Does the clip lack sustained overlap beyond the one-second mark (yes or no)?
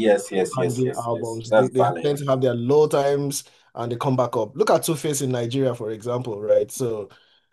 no